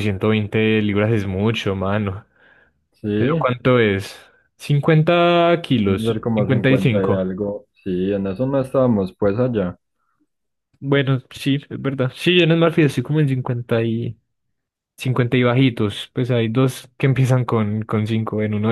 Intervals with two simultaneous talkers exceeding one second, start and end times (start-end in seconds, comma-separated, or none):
5.8-7.2